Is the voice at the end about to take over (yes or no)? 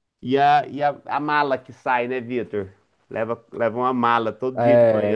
yes